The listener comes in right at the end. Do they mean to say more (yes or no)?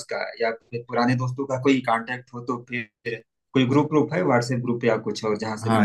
yes